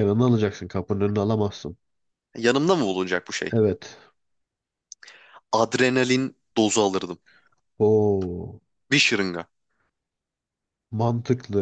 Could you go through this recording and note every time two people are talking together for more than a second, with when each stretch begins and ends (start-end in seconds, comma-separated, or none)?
none